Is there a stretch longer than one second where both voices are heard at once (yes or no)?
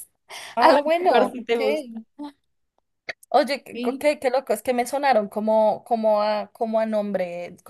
yes